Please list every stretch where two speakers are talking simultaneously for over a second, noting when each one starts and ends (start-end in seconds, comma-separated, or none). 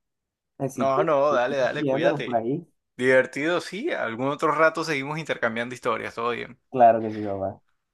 0.7-2.4